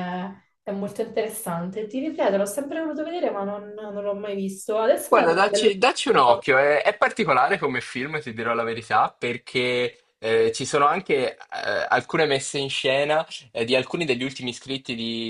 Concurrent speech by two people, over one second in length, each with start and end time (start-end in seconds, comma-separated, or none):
5.1-6.5